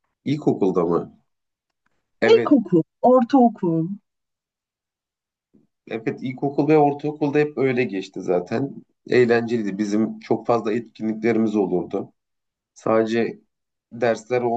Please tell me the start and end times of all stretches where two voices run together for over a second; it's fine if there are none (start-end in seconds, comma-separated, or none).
none